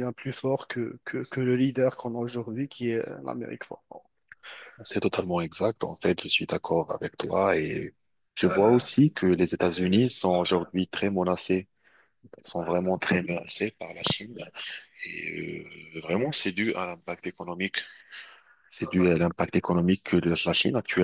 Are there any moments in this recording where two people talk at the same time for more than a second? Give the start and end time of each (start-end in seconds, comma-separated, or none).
none